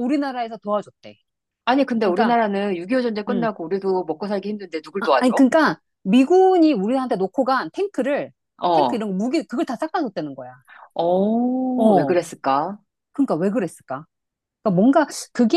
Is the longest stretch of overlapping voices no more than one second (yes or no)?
yes